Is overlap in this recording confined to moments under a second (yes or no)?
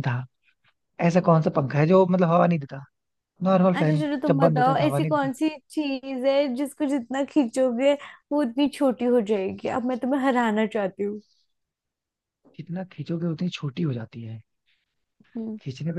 no